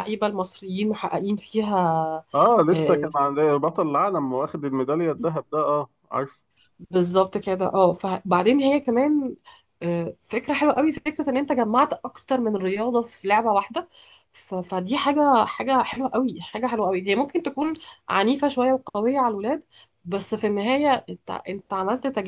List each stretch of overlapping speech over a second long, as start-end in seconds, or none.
none